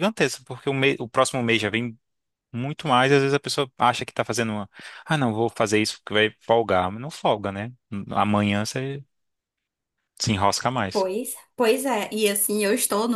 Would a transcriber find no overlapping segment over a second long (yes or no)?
yes